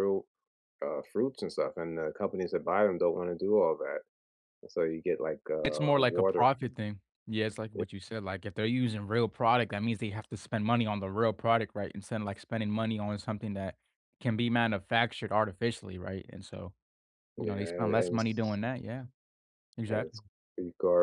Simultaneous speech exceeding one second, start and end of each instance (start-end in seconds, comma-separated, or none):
17.4-18.6